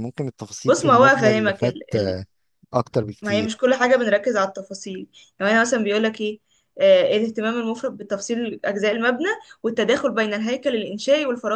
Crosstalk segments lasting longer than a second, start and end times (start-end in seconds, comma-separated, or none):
0.7-2.2